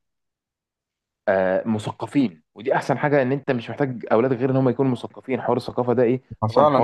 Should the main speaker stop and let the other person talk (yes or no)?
yes